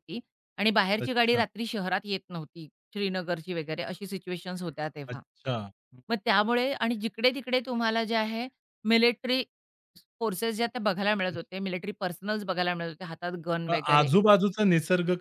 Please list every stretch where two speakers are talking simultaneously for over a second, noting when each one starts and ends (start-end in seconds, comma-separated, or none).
none